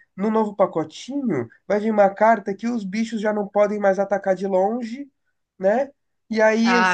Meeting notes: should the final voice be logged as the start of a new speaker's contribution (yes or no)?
yes